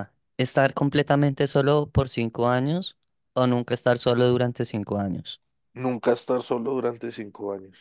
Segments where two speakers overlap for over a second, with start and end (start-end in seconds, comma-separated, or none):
none